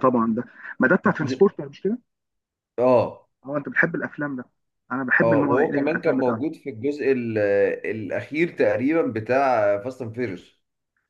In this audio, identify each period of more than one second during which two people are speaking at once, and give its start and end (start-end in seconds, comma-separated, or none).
5.2-6.4